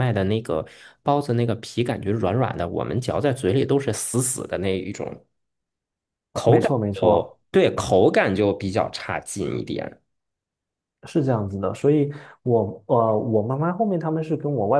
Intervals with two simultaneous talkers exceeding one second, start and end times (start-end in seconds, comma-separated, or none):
none